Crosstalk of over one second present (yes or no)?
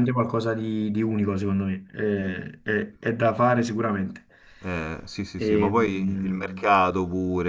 yes